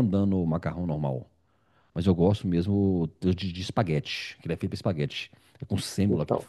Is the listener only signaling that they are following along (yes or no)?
yes